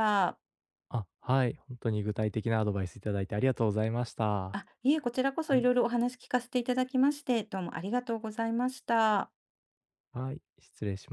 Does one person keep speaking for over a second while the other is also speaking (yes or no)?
no